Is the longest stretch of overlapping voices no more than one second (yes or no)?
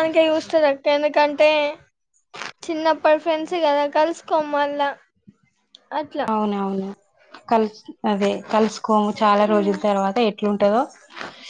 yes